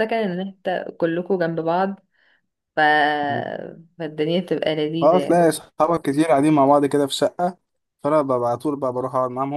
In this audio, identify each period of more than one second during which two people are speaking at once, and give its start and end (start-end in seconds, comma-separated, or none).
none